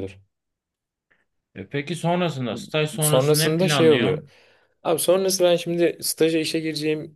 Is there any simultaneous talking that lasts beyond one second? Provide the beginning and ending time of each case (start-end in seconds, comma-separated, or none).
3.0-4.3